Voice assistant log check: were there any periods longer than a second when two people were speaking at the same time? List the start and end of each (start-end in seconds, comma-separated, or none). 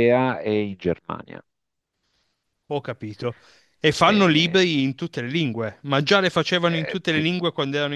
none